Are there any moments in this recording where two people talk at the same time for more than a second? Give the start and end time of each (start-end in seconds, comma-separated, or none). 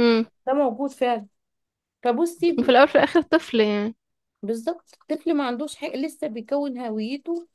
none